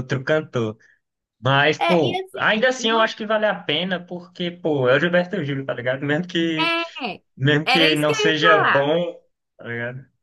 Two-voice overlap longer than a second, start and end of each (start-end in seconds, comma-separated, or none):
1.8-3.1, 7.6-8.9